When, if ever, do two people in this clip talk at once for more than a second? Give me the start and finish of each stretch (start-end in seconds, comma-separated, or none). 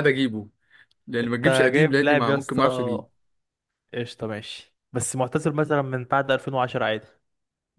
1.2-3.0